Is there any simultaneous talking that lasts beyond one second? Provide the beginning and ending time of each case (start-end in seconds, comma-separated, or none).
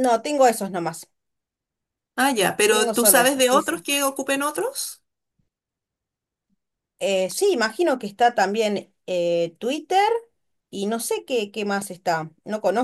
2.7-3.9